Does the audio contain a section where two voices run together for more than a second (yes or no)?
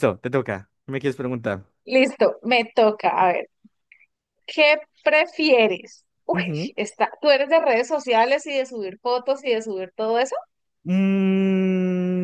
no